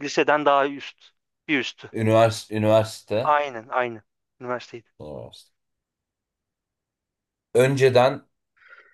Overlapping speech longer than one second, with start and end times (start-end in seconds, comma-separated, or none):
none